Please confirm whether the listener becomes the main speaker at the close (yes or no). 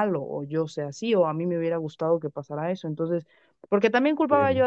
no